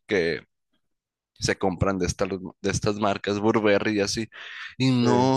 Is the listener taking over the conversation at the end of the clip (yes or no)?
no